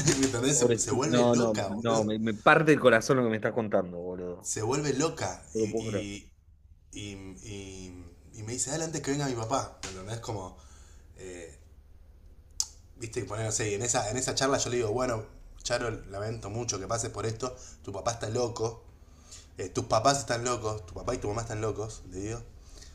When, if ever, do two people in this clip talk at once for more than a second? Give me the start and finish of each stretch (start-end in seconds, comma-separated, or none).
0.5-2.1